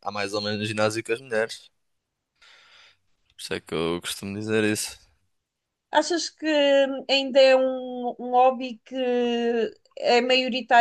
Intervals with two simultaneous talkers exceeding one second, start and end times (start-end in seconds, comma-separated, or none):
none